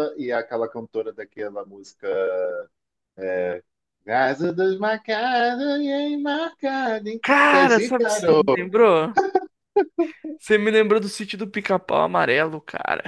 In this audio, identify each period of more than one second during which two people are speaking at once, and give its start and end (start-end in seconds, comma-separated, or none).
7.2-8.4